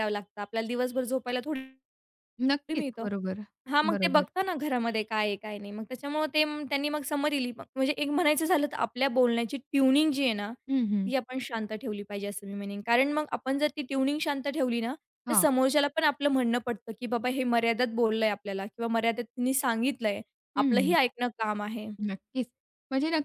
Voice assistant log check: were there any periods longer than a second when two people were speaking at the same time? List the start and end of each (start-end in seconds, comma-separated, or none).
none